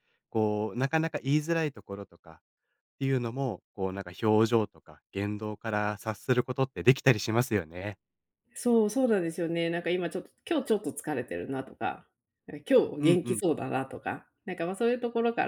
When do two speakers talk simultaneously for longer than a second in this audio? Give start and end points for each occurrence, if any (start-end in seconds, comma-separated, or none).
none